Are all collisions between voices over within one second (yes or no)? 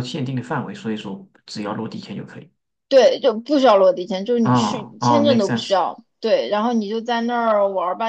no